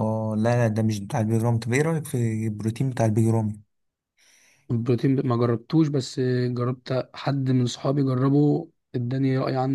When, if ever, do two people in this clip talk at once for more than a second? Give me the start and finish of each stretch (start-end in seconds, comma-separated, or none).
none